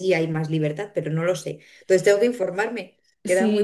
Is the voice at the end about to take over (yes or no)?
yes